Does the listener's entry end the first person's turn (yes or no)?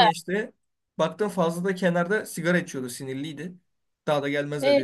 no